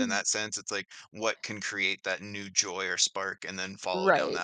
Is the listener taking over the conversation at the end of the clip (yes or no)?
yes